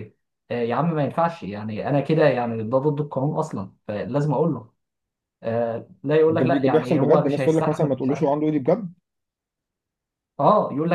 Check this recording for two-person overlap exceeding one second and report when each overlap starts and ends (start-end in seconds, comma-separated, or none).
6.3-7.9